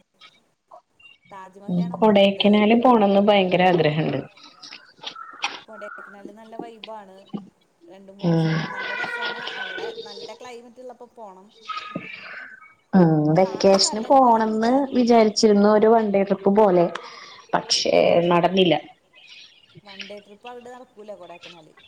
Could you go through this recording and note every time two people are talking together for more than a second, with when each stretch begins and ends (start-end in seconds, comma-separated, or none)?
13.4-14.7